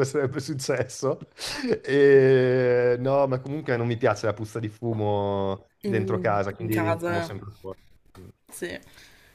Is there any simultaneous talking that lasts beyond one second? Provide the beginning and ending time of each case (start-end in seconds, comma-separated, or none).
5.8-7.3